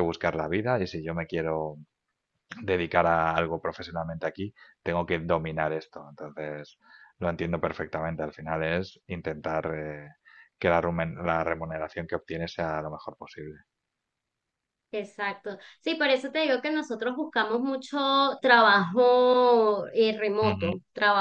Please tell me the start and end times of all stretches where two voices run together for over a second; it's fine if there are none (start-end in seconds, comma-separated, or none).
none